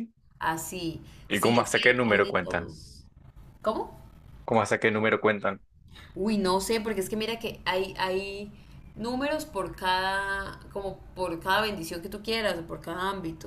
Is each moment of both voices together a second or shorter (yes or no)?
no